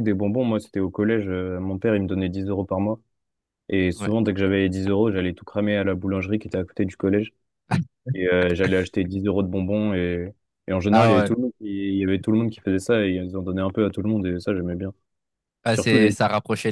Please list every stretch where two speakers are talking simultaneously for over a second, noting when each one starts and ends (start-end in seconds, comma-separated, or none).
none